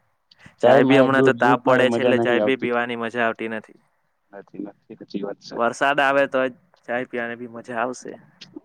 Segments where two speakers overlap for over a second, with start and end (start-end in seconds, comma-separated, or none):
0.6-2.7